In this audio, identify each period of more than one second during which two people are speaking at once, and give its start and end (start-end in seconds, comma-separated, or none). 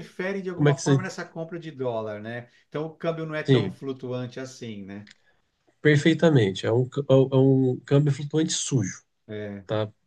none